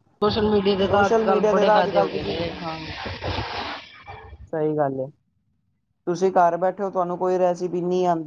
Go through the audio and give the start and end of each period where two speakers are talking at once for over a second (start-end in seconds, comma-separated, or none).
0.9-2.1